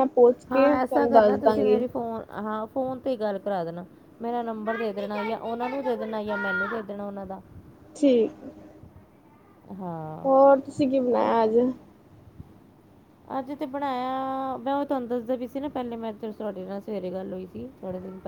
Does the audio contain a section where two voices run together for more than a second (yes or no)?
yes